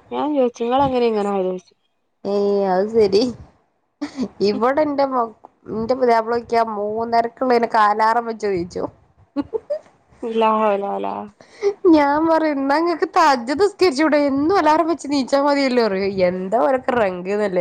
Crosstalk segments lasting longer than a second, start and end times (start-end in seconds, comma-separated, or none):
none